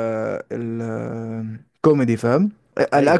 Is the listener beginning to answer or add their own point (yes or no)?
no